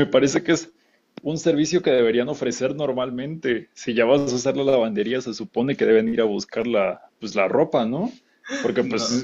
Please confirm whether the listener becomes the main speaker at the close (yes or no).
no